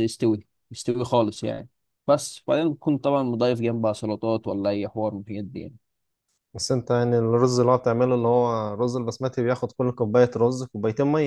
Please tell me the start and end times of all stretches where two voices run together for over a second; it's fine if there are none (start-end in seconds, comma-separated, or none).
none